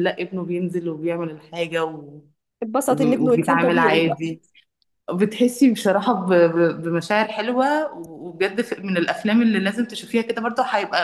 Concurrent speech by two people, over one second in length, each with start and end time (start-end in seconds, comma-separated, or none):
2.9-4.2